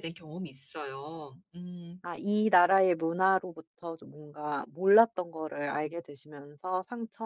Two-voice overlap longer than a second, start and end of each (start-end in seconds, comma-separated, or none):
none